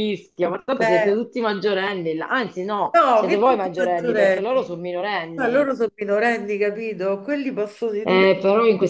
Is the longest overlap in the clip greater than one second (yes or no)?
yes